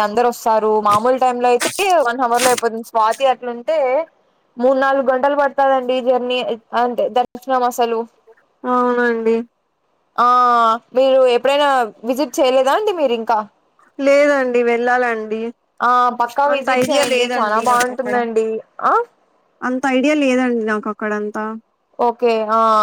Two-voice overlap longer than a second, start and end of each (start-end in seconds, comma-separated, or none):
16.5-18.1